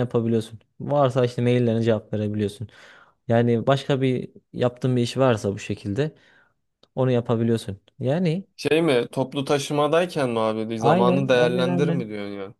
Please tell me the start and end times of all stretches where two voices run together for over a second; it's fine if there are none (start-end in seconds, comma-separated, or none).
10.8-12.0